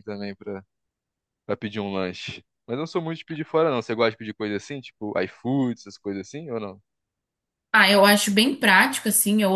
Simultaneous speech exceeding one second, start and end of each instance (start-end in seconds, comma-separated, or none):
none